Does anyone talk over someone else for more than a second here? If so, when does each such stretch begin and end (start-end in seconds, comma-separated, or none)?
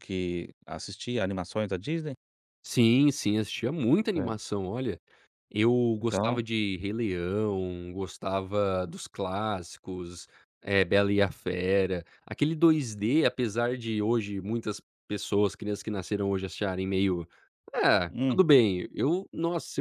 none